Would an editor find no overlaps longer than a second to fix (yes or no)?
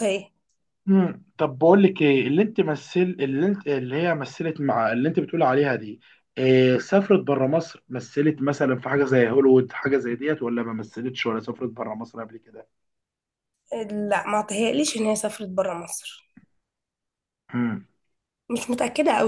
yes